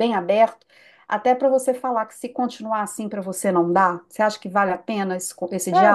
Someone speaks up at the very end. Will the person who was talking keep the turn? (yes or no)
no